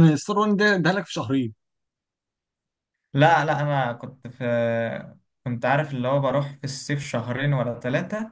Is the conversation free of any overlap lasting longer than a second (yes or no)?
yes